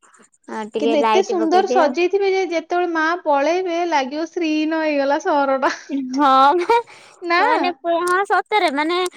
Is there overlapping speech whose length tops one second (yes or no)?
no